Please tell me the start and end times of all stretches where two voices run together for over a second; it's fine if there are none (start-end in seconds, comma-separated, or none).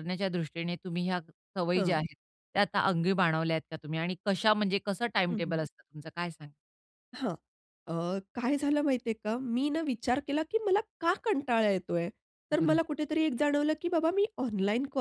none